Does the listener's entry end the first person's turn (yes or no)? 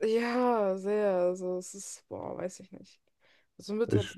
no